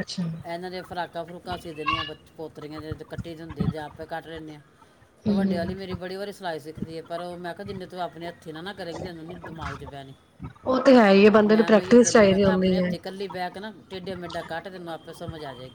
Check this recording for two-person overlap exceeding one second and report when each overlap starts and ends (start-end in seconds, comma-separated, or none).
11.4-12.9